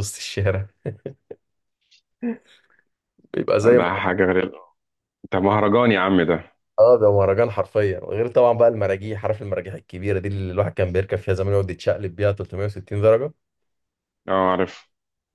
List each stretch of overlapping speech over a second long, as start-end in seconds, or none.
none